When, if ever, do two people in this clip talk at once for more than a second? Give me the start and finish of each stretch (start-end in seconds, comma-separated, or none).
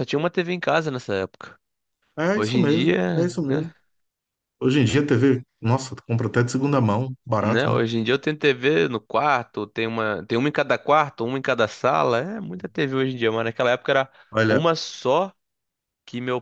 2.3-3.7